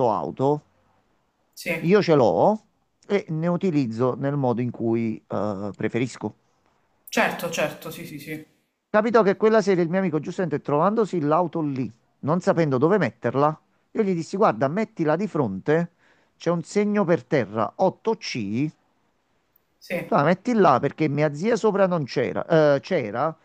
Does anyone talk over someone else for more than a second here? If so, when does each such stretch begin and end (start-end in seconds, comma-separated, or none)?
none